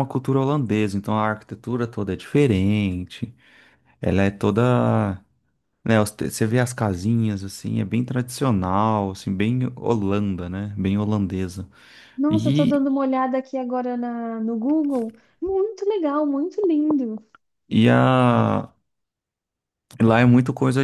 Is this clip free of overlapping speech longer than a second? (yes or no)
yes